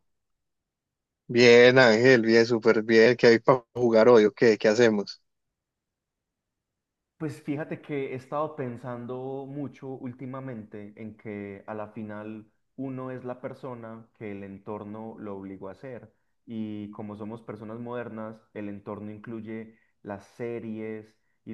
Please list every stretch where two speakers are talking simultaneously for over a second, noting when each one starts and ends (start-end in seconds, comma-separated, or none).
none